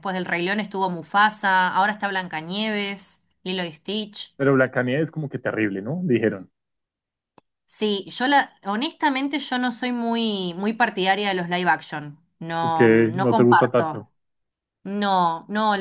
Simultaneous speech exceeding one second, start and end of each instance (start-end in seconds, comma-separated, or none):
12.7-14.0